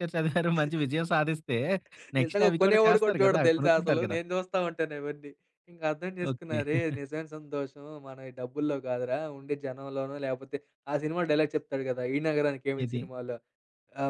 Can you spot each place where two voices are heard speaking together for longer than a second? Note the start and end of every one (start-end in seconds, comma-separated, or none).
2.2-4.2